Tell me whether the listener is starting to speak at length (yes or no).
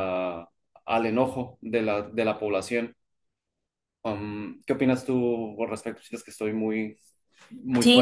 yes